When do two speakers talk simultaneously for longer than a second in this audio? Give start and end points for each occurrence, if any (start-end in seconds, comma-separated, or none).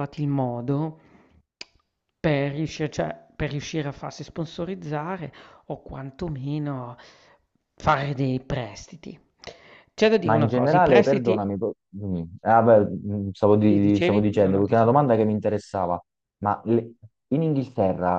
10.2-11.5, 13.6-15.0